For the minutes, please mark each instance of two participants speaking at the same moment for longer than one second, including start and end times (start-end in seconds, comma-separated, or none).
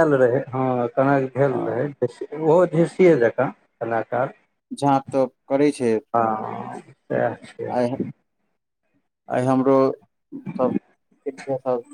none